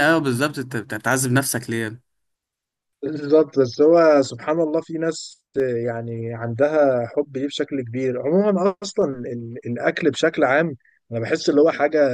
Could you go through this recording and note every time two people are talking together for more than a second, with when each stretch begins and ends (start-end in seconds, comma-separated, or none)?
none